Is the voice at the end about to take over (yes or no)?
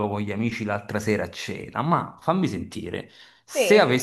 no